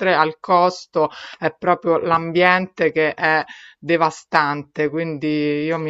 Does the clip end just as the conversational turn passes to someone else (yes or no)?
yes